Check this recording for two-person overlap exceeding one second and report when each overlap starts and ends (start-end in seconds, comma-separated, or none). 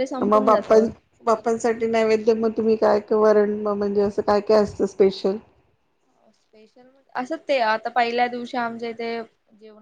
none